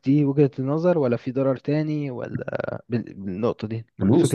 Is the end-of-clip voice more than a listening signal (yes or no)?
yes